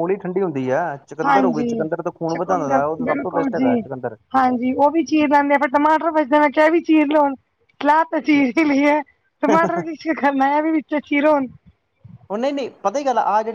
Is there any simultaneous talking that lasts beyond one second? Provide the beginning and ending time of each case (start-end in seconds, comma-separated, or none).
2.3-3.8